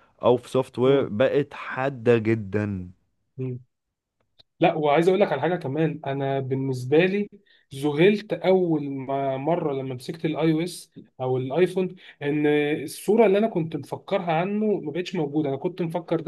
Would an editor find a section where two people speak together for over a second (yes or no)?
no